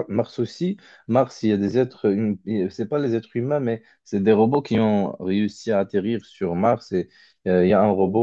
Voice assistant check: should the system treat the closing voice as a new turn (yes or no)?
no